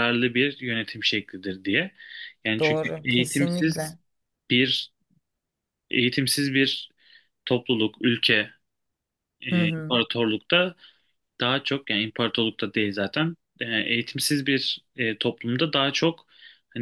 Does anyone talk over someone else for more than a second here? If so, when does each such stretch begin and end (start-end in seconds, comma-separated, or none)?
2.6-4.0